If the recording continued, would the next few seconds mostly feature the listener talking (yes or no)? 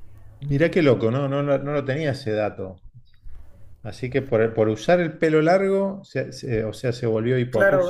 yes